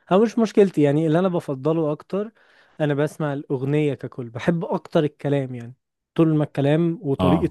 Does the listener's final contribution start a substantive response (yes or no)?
no